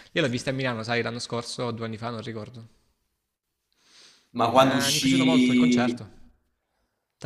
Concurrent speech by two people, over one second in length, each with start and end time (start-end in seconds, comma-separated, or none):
4.6-6.0